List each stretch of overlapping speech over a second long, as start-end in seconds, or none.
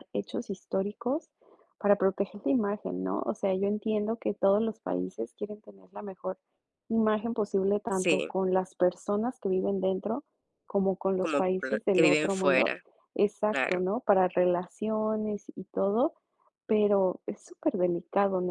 11.2-12.7